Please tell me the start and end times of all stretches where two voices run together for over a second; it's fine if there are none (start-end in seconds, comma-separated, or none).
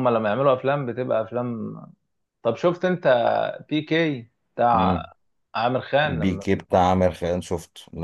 none